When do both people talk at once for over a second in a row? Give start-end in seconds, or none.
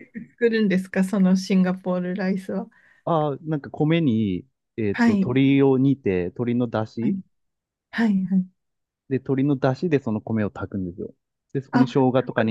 none